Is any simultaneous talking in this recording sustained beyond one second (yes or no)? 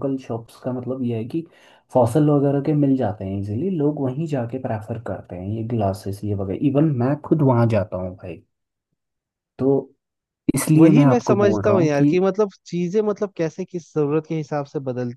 yes